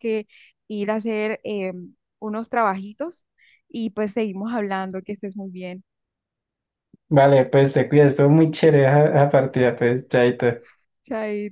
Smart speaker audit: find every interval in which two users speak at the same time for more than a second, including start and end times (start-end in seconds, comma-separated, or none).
none